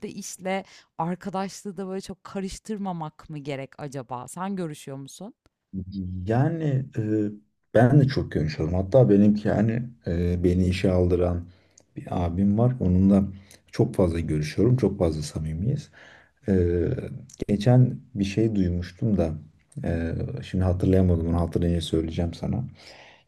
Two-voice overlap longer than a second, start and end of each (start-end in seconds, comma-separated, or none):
none